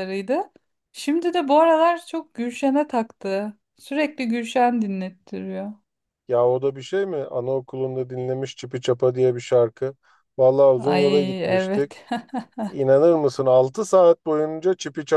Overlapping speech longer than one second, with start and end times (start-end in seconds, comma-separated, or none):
10.8-12.0